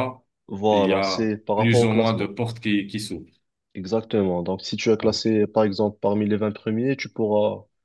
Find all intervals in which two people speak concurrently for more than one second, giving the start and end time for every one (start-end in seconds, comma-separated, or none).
0.7-2.3